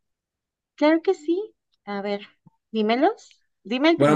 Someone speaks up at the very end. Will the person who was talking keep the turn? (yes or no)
no